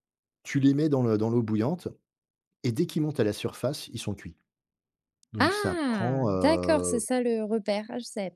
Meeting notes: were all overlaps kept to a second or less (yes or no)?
no